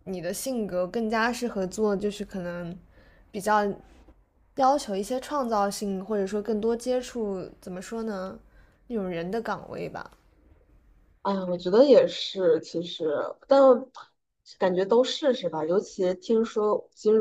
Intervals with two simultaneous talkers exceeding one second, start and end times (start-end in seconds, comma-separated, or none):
none